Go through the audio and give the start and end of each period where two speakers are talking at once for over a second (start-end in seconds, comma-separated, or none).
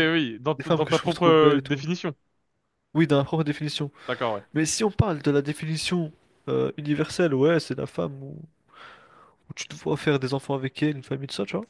0.6-1.8